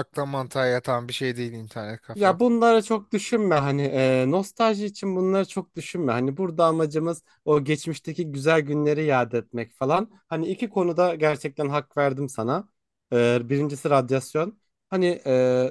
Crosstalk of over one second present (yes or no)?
no